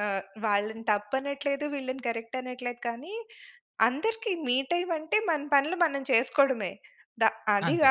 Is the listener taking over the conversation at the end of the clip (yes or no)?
no